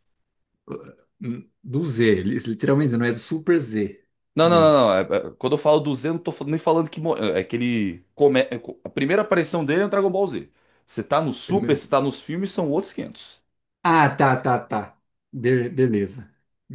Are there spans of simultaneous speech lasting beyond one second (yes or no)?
no